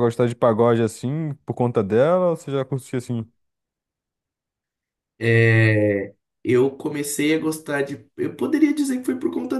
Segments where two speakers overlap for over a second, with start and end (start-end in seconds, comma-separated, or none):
none